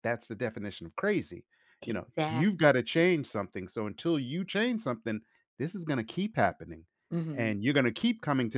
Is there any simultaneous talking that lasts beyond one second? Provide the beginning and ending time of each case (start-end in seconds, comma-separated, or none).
1.8-3.1